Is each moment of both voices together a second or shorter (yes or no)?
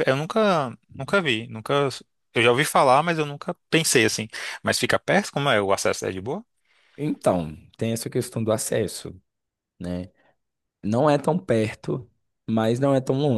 yes